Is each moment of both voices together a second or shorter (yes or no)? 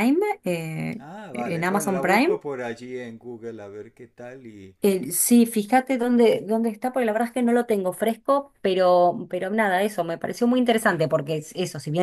no